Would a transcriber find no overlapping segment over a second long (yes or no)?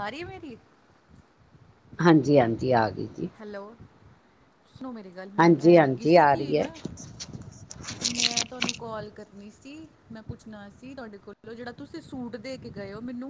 no